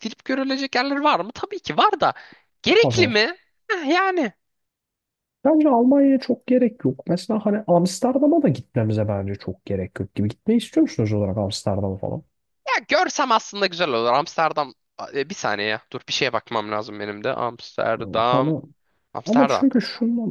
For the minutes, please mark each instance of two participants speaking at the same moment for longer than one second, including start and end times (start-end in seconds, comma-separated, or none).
none